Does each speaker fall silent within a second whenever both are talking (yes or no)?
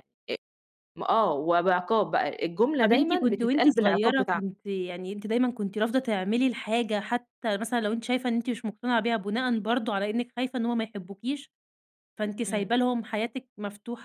no